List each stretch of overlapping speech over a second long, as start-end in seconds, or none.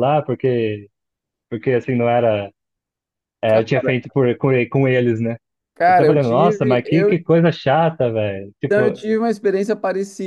5.8-7.2